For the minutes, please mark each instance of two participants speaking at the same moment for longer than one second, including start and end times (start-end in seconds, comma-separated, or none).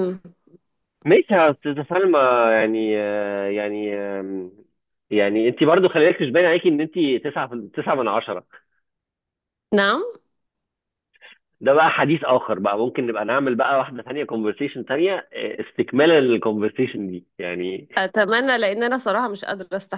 none